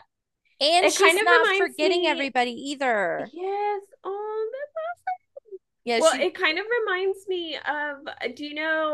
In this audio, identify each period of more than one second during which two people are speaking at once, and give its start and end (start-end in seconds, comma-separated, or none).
0.8-2.3